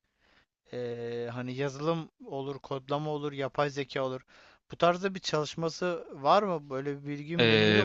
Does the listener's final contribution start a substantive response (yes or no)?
yes